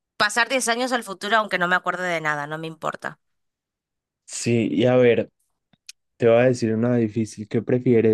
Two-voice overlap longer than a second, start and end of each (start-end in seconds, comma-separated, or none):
none